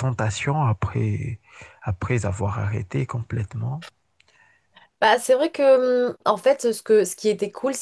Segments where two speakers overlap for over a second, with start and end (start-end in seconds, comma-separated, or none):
none